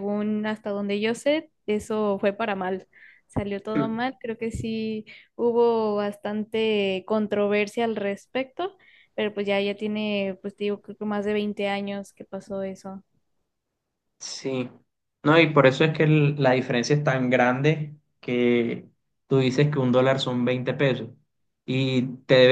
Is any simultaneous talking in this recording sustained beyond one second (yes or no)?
no